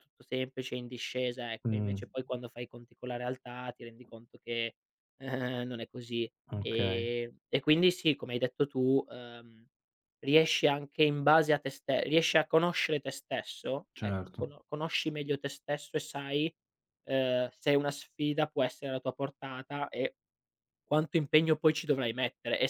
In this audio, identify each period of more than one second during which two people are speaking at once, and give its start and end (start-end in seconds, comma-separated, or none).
none